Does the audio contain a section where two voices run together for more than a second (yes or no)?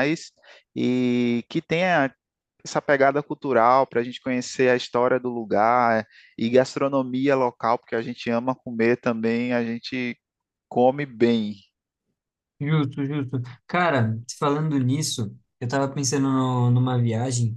no